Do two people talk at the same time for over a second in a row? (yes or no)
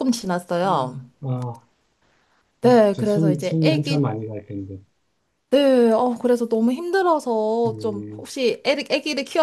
yes